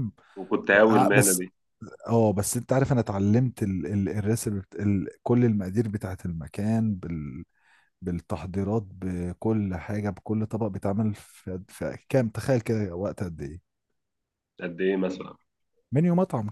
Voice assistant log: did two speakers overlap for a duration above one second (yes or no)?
no